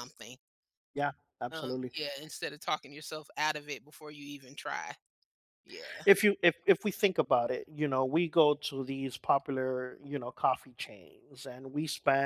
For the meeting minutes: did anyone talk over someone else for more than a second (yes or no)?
no